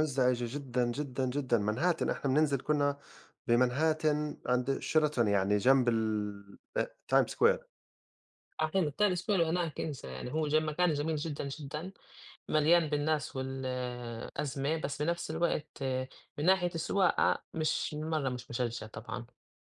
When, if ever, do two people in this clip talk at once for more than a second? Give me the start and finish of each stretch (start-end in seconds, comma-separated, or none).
none